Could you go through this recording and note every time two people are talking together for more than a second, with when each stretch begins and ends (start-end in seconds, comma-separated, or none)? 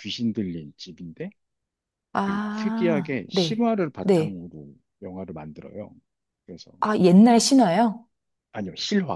2.2-4.4